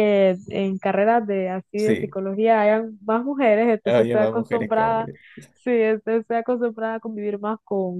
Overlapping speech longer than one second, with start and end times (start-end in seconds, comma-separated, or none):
3.8-5.1